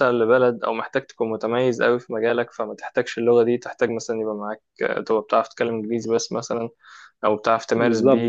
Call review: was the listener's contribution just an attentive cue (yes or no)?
yes